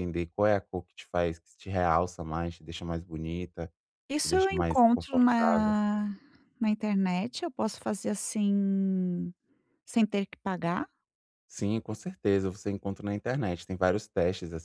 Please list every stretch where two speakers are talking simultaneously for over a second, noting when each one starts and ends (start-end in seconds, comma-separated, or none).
4.2-5.8